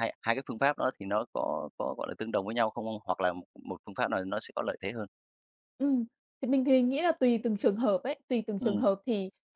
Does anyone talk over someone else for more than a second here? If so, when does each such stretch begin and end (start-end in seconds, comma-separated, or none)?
none